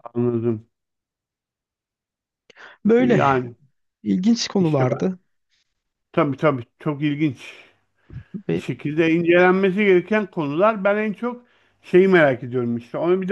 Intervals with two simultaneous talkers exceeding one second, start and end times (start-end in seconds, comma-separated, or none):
none